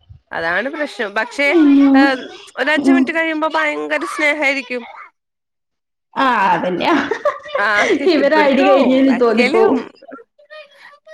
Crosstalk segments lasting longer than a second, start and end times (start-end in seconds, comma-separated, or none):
8.2-9.8